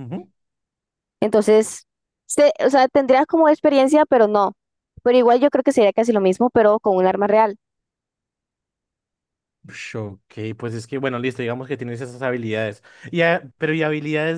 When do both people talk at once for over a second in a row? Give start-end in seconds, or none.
none